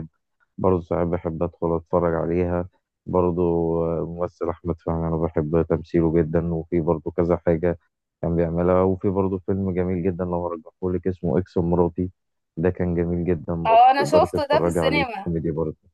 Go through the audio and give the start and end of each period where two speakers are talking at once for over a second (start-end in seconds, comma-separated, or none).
13.7-15.3